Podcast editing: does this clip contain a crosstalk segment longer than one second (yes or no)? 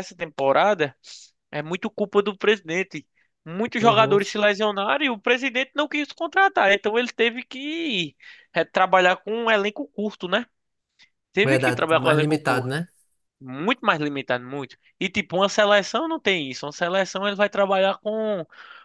yes